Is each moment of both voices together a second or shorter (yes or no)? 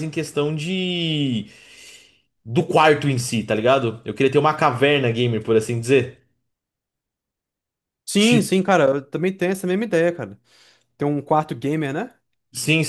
yes